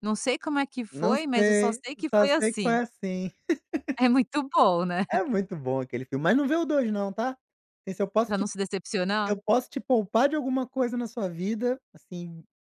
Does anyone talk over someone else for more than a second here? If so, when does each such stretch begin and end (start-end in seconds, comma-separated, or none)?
0.9-2.8